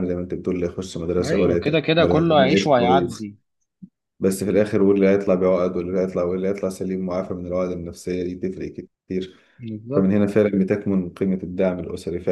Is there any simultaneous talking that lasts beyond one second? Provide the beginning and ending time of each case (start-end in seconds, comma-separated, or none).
1.2-3.3